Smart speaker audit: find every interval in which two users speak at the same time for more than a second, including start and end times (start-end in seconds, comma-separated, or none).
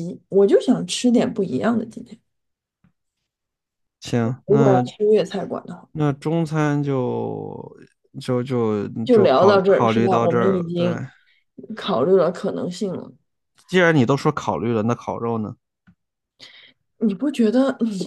9.0-10.9